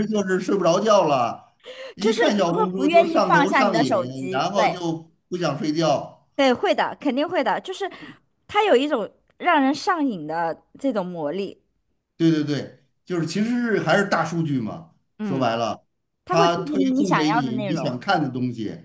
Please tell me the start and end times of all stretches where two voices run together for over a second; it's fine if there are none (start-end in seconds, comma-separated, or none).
2.0-4.8, 16.3-17.9